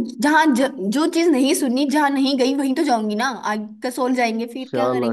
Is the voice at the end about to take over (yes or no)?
yes